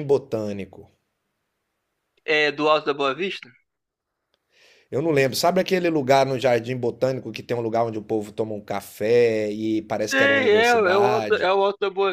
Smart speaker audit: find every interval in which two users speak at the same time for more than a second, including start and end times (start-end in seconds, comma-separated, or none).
10.0-11.5